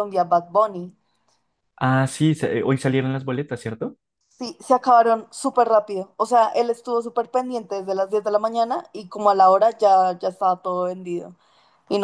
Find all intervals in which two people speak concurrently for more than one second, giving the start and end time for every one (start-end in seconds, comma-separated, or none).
none